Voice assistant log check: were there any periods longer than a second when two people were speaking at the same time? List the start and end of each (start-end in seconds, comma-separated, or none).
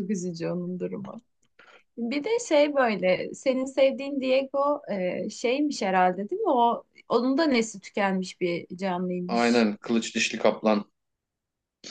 none